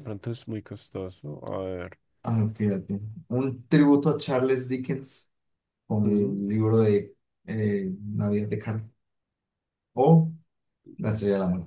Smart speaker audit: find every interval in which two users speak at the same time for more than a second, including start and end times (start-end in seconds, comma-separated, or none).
none